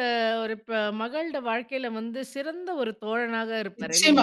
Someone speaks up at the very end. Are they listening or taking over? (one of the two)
taking over